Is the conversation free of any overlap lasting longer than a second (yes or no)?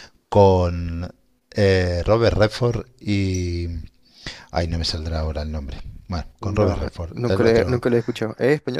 no